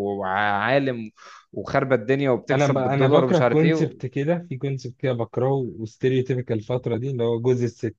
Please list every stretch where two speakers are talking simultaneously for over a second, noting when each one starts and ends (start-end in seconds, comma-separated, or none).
2.5-3.9